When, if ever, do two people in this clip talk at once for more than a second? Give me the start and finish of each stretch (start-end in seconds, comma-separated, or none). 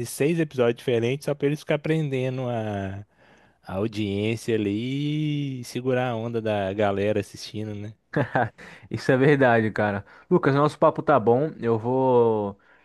none